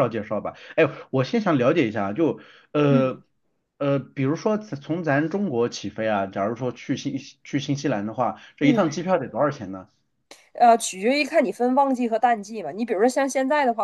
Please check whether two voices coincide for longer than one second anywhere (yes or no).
no